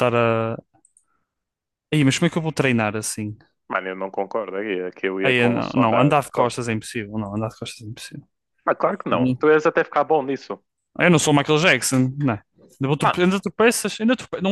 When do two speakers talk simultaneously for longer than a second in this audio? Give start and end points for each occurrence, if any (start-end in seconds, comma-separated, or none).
5.2-6.6